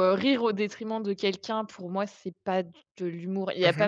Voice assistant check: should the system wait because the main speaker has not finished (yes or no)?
yes